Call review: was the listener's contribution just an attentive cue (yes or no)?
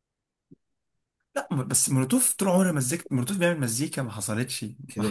no